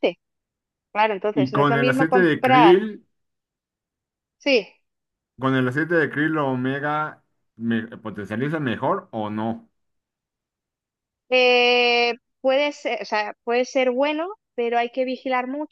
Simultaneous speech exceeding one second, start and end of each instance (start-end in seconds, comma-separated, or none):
1.3-2.8